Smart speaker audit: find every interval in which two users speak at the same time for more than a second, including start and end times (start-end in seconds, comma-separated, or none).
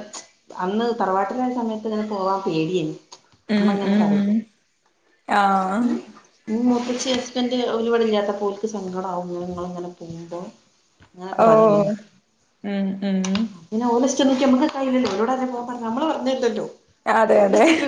none